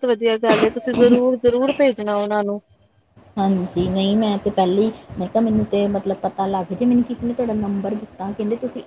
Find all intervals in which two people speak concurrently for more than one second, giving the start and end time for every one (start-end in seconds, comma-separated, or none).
none